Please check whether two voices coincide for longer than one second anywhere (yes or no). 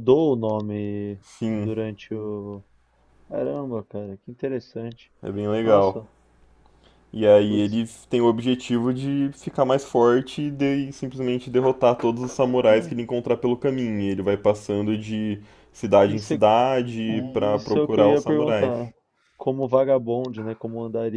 yes